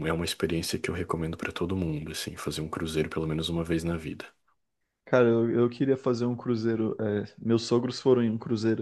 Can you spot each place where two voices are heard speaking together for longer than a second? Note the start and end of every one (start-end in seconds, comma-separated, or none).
none